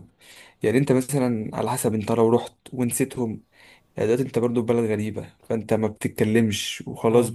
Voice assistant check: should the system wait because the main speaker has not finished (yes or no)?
yes